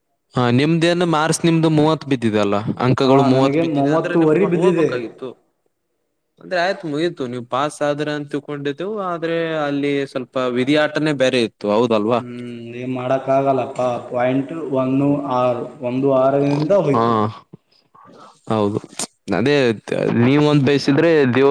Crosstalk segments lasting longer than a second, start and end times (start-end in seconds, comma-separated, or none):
3.0-4.9